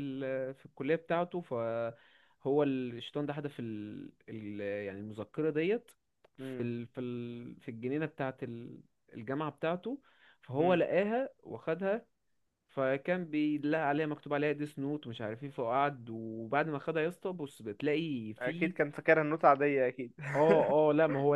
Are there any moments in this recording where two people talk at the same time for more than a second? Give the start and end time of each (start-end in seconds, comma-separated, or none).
none